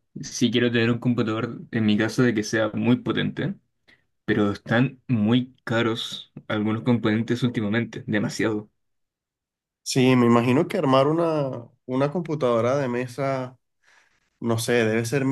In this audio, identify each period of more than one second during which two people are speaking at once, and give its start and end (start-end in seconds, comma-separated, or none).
none